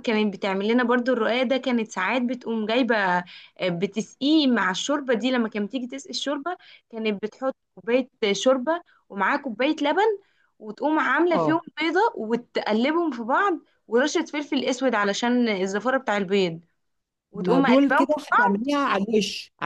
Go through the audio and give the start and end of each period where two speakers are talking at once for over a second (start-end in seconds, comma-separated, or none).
17.3-18.7